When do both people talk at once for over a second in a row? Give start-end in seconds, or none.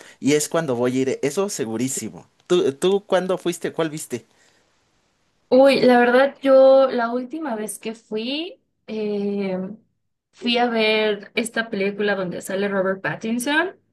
none